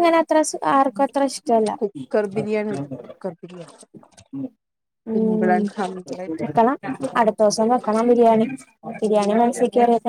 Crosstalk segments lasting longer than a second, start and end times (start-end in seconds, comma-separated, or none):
none